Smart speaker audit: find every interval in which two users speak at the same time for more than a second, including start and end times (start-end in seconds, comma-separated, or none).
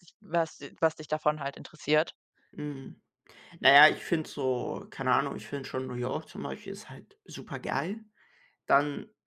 none